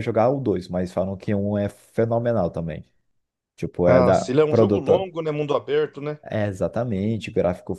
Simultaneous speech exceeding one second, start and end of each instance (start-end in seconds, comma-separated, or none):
3.8-5.1